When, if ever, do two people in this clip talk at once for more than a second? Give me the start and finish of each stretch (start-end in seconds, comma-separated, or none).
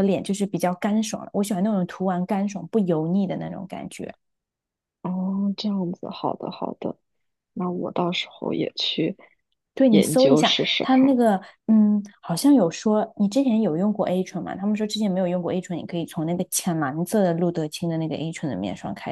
9.9-11.2